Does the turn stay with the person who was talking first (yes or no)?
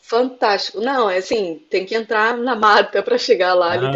yes